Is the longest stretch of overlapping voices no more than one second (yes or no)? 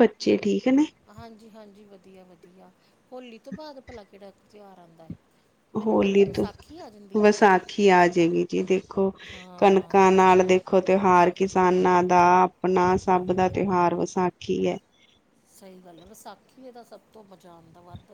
yes